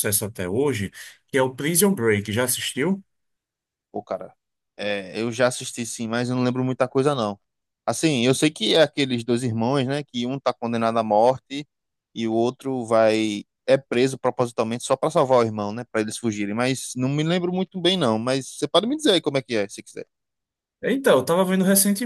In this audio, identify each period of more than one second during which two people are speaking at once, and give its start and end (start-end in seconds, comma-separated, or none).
none